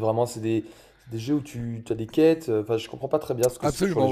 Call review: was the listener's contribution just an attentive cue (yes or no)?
no